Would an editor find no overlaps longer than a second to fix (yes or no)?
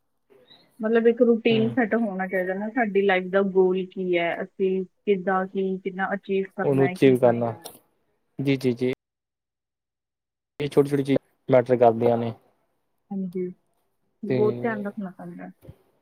yes